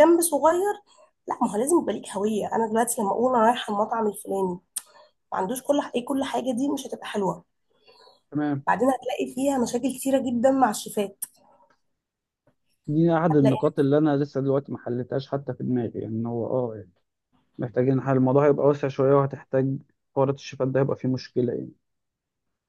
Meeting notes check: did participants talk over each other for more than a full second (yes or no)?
no